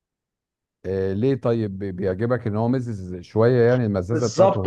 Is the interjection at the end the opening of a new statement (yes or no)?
yes